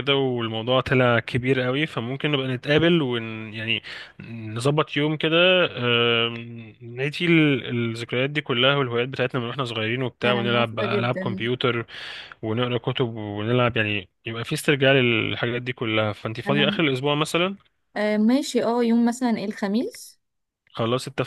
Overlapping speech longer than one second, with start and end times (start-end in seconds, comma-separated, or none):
10.2-11.5